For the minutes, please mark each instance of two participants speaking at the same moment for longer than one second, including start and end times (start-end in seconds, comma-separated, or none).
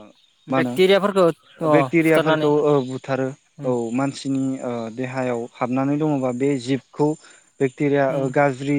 0.6-2.5